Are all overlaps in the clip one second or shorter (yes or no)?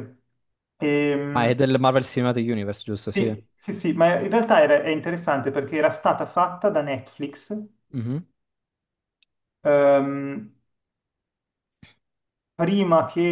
yes